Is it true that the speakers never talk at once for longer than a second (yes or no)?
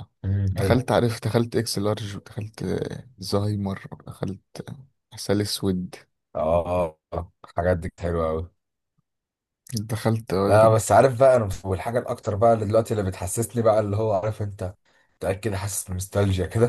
yes